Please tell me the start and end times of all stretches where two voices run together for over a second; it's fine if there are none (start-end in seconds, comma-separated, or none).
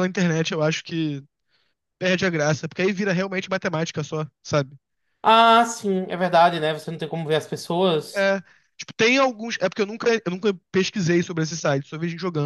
none